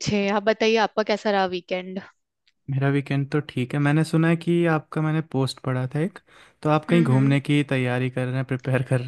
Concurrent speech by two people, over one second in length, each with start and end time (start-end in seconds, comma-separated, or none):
none